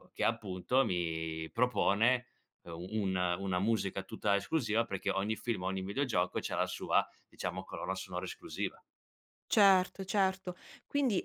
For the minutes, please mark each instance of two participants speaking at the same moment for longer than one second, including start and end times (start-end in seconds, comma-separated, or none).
none